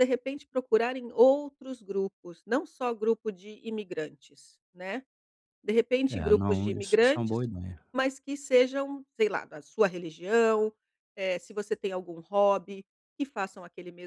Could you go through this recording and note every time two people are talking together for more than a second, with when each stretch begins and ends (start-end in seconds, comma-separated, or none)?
6.1-7.4